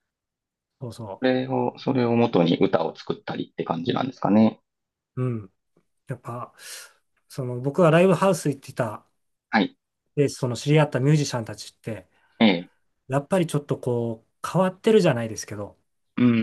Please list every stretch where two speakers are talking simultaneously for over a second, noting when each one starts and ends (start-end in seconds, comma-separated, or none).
none